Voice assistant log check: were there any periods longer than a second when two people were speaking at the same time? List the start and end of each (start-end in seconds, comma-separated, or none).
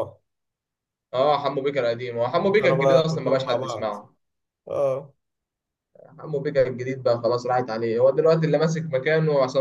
2.6-4.0